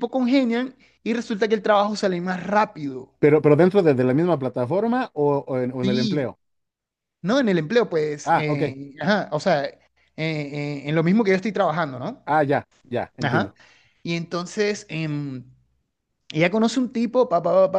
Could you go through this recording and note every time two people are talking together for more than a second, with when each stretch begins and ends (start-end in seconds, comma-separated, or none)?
none